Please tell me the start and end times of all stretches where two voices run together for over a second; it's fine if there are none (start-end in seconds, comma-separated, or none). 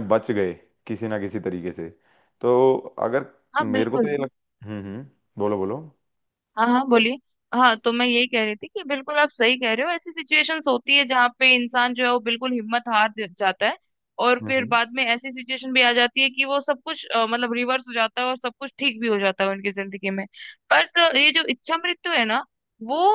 none